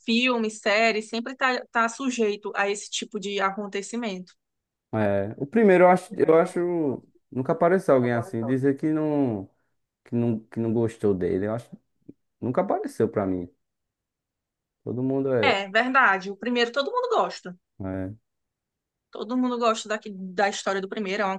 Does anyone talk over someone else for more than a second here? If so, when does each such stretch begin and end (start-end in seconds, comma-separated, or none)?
none